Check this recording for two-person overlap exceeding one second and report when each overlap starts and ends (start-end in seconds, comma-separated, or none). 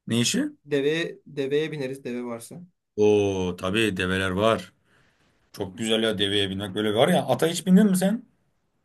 none